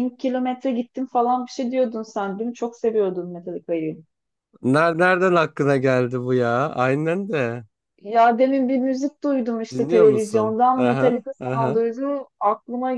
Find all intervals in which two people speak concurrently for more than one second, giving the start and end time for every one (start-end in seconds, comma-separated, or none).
9.7-11.8